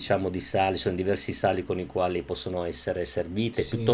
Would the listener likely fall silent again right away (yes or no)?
yes